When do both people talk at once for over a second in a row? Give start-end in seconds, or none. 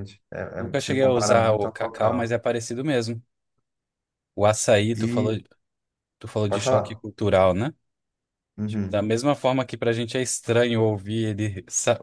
0.6-2.4